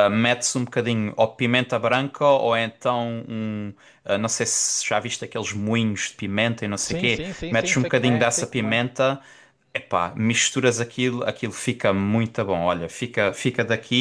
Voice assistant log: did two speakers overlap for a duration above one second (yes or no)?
yes